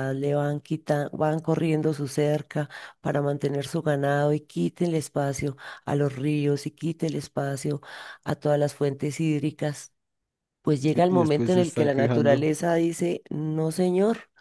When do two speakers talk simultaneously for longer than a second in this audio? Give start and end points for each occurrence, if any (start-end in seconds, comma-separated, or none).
10.9-12.5